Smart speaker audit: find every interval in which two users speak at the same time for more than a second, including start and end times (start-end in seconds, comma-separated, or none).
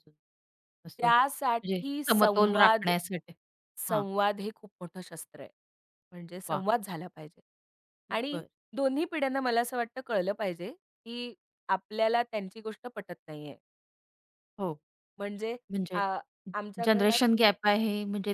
1.0-2.9